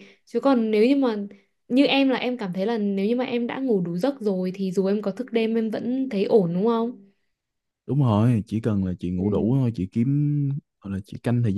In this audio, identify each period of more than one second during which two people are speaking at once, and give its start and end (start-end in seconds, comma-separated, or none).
none